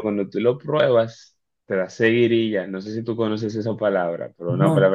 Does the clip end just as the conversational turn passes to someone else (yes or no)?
no